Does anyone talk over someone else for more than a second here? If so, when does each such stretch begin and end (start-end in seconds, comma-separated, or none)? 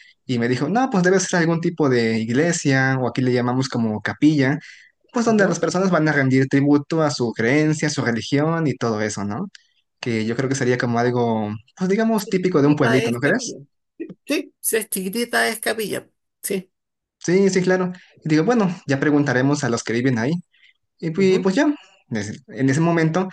12.2-13.6